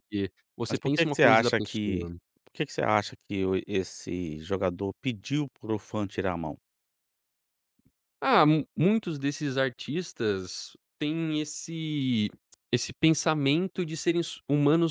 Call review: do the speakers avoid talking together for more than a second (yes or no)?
no